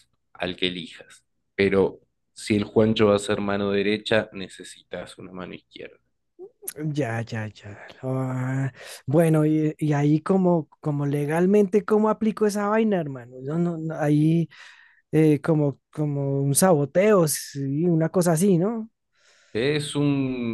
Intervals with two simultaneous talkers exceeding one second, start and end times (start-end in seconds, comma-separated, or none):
none